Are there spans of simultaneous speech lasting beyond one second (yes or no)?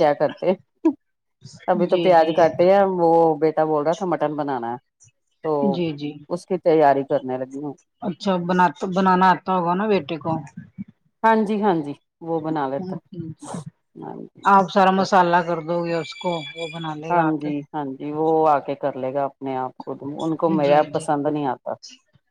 no